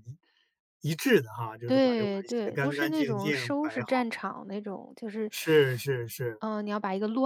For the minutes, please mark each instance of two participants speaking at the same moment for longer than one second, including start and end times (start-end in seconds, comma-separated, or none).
1.7-4.1